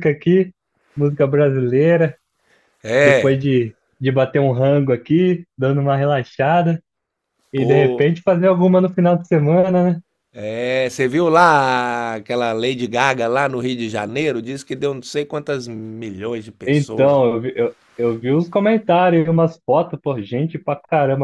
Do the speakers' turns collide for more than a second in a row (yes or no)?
no